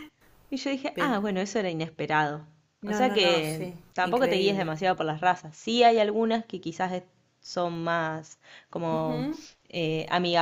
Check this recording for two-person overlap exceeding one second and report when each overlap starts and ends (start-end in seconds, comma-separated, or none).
2.9-4.7